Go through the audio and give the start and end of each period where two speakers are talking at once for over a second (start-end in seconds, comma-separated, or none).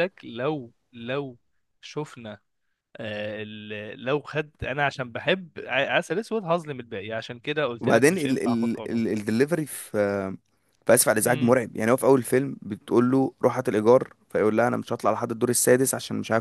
7.8-9.0